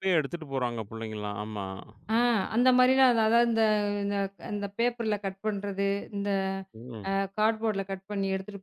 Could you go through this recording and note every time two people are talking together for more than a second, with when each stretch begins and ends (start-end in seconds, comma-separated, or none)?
none